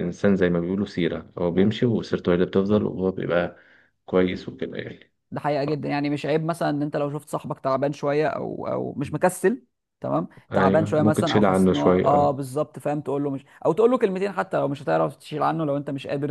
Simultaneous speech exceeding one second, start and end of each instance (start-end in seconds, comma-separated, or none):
10.5-12.3